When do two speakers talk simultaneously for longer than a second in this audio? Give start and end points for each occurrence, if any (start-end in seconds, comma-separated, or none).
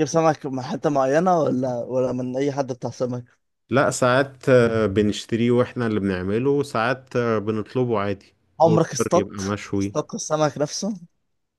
8.6-9.9